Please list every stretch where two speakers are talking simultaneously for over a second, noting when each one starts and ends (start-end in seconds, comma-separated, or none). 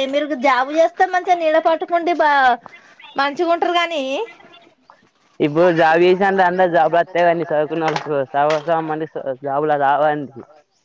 none